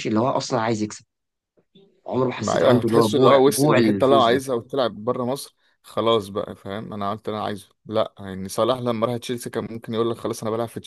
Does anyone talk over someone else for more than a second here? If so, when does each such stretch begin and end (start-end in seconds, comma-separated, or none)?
2.4-4.4